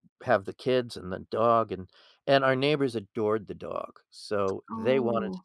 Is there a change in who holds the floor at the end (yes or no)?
no